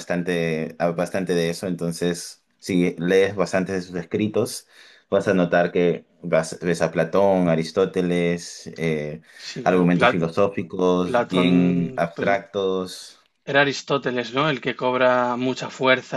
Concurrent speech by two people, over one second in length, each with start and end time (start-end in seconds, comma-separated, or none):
11.0-12.4